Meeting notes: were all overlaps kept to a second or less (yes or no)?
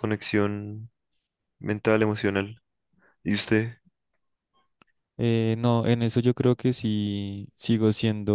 yes